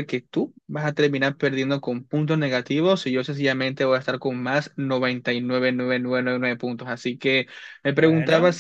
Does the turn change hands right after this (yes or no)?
no